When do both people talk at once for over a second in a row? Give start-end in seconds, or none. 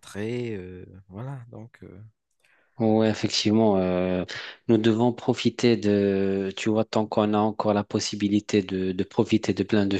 none